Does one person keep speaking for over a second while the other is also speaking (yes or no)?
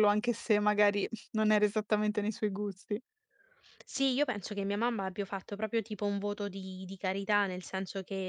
no